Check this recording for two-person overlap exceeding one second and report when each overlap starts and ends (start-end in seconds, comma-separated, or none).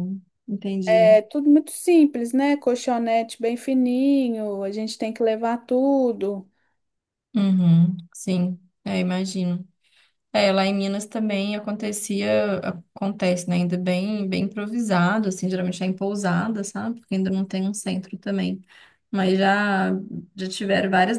none